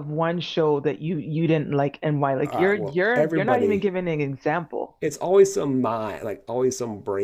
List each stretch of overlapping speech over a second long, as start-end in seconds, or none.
2.4-3.9